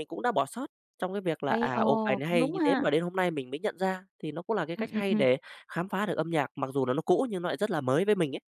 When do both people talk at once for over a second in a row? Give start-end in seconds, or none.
1.5-2.9